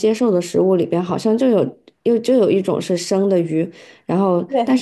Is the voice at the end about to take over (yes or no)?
no